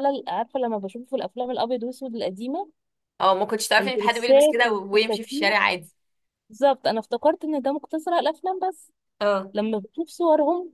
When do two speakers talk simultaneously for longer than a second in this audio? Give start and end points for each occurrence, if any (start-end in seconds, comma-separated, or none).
3.8-5.5